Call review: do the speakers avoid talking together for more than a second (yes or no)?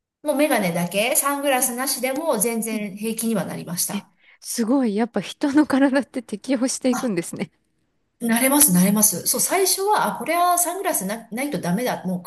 yes